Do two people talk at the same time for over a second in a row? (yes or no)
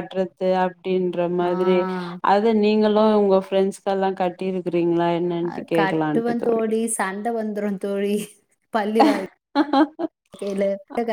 no